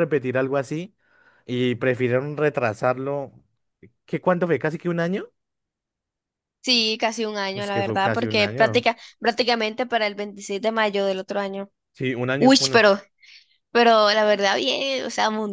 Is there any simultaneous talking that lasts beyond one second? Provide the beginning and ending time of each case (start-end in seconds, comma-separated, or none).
7.5-8.9